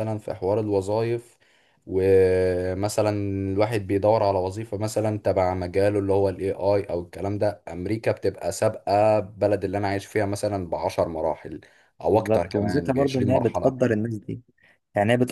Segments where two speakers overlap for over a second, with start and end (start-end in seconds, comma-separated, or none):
12.1-13.8